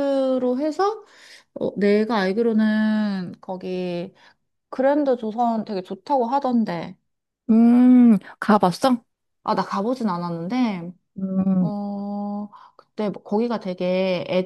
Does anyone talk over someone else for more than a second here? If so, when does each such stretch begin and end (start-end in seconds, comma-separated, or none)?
none